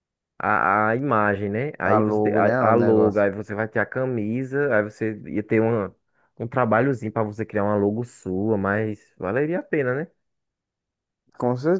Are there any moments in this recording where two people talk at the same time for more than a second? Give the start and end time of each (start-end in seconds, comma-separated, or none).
1.8-3.2